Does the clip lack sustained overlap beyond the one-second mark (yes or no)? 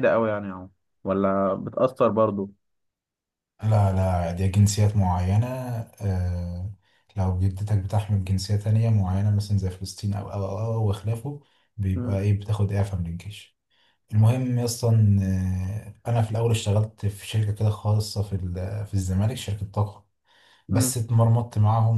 yes